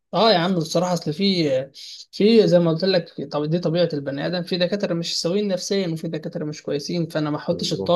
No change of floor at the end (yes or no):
yes